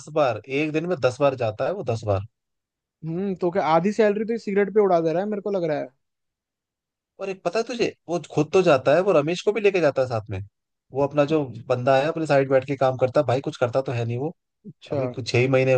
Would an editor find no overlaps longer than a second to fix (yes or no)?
yes